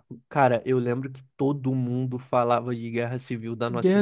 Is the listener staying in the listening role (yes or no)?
no